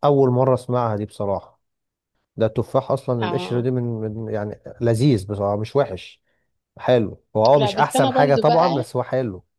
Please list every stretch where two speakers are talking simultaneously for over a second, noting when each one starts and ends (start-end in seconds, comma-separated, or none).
7.6-8.8